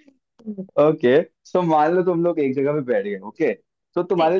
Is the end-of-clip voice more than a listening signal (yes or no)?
no